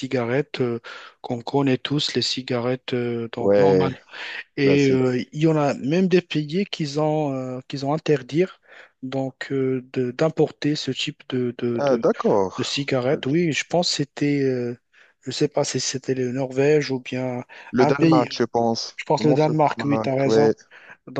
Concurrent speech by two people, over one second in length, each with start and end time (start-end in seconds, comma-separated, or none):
18.9-20.5